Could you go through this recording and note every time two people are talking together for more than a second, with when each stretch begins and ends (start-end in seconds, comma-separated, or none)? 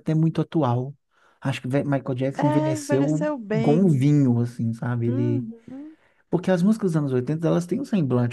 2.3-4.0